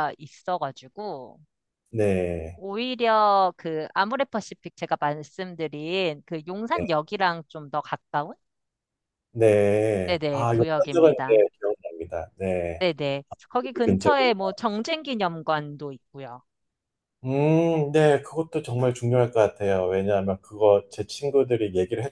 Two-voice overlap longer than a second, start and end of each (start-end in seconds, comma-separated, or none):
10.0-11.4